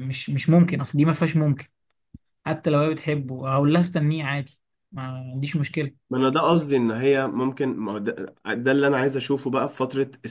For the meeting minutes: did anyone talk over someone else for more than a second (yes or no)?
no